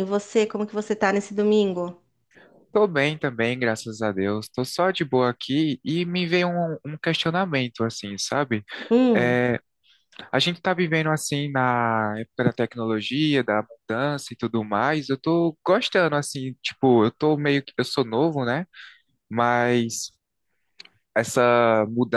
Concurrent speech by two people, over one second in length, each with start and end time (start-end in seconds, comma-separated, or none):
none